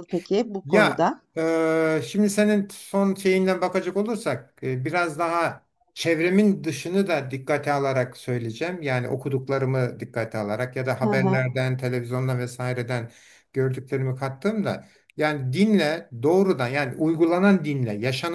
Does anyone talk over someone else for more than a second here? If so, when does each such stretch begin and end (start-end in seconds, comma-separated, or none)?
none